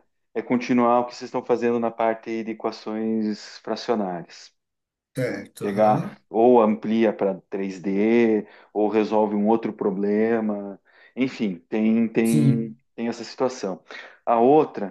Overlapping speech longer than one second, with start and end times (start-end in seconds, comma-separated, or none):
none